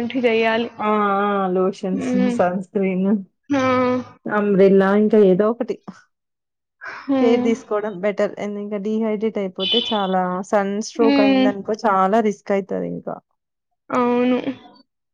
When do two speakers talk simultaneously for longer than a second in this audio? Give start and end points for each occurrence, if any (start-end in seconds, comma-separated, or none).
none